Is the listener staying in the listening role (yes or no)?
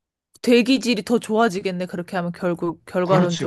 no